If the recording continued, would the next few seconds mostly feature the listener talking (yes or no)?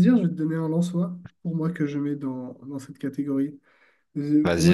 no